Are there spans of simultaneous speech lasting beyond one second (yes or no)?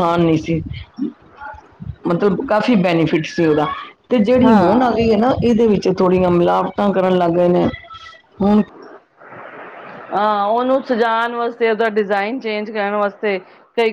no